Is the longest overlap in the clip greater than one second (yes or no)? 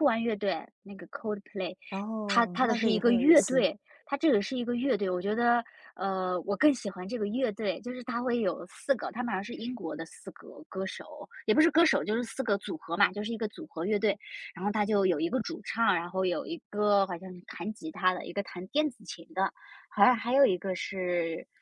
yes